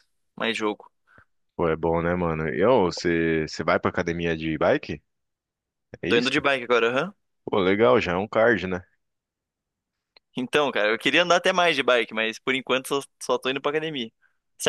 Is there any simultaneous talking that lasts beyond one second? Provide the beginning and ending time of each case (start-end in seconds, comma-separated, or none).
none